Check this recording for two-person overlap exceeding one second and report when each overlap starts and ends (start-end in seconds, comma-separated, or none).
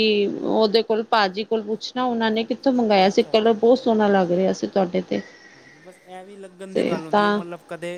3.1-4.5